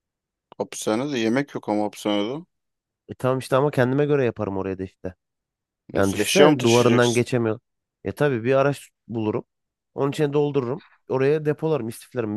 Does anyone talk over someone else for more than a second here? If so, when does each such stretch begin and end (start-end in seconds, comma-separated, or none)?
6.0-7.2